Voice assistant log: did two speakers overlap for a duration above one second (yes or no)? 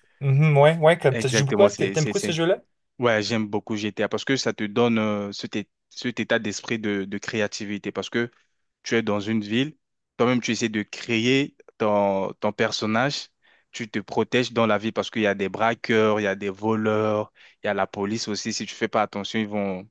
yes